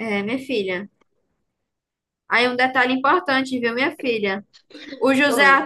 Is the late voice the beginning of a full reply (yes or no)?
no